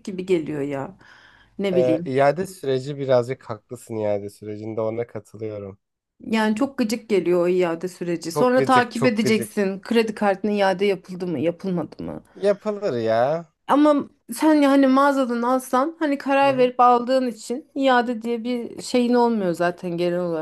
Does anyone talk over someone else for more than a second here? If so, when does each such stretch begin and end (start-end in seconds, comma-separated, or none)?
8.3-9.5